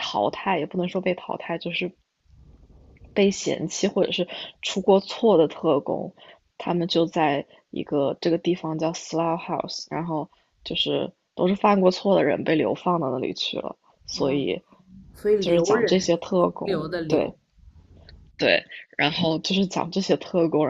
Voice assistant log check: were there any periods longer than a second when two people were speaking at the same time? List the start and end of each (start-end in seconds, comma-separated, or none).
15.4-17.4